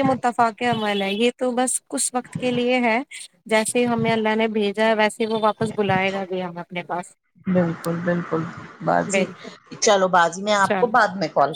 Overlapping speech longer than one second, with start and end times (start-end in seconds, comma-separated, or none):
none